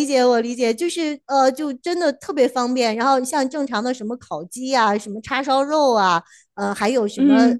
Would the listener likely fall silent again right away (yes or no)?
yes